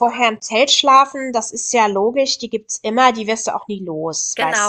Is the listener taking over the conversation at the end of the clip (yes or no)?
yes